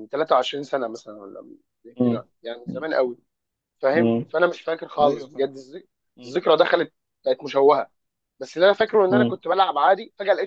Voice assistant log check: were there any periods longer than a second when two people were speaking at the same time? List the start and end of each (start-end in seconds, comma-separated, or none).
none